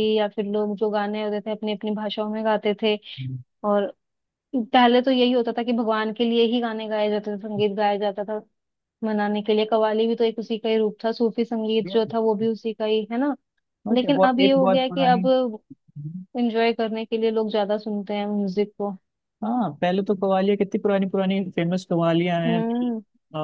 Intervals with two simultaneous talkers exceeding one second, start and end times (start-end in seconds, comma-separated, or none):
13.9-15.2